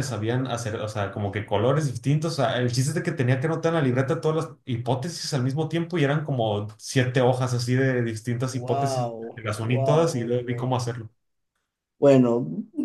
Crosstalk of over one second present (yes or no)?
yes